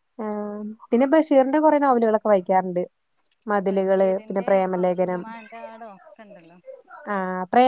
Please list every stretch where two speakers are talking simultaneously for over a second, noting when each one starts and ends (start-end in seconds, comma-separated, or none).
3.7-5.2